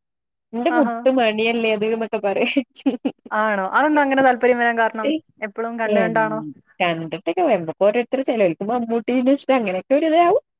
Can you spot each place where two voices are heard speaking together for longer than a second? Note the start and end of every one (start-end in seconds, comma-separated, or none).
none